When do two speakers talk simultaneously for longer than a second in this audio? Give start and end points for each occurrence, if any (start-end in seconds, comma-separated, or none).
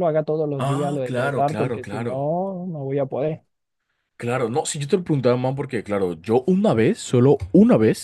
0.6-2.3